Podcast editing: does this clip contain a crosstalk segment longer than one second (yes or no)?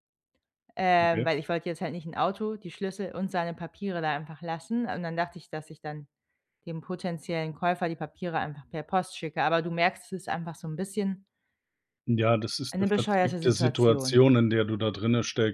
yes